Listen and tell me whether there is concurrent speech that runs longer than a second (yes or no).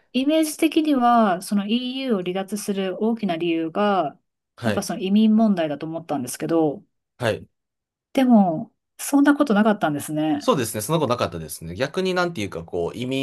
no